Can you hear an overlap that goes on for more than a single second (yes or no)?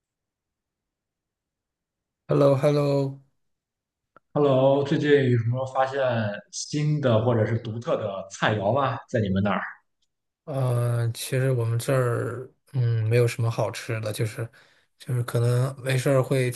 no